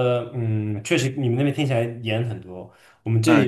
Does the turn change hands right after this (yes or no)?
no